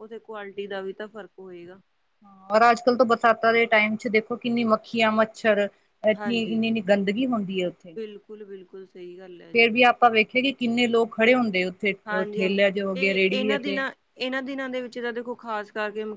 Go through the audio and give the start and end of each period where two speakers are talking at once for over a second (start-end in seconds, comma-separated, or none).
12.3-13.8